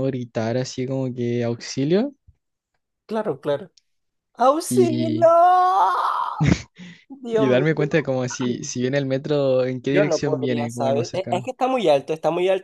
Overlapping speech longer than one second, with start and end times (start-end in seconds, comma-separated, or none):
9.9-11.5